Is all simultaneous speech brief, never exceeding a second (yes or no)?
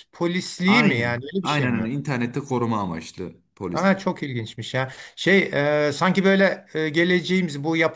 no